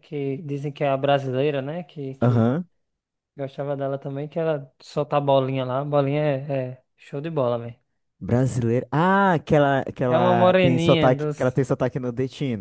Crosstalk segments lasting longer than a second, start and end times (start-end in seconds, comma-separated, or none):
10.1-11.6